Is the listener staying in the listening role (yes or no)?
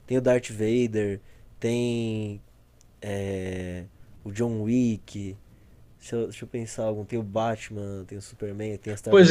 no